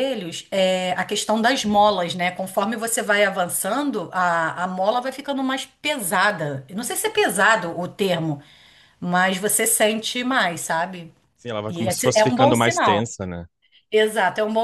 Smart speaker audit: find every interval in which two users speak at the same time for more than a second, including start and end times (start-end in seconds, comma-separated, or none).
11.7-13.1